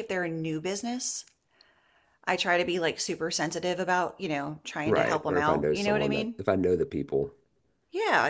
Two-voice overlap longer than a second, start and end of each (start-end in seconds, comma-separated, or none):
4.8-6.3